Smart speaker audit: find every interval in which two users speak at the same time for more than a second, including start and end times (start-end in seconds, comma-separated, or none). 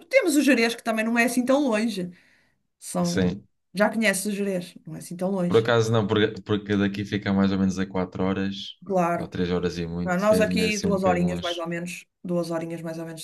10.0-11.6